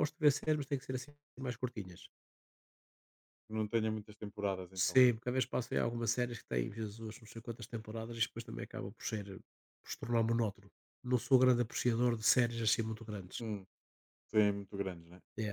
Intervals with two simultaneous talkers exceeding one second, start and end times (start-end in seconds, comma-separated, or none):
none